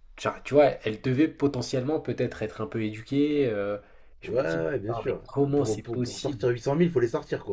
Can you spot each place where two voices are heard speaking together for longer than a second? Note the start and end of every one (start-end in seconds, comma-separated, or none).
4.2-6.5